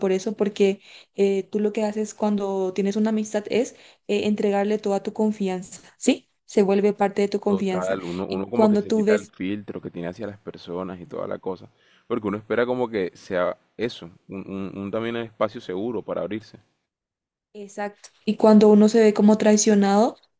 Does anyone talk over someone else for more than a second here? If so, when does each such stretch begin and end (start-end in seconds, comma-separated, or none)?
7.5-9.3